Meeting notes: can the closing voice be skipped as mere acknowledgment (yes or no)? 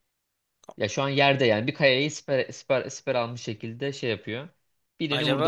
no